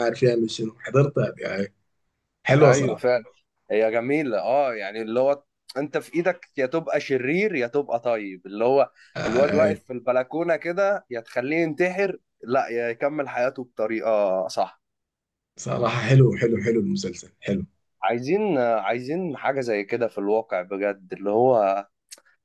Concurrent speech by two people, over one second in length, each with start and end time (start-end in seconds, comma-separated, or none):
none